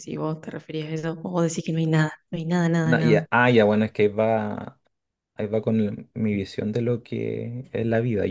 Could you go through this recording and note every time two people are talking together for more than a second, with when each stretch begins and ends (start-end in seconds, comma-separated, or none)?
none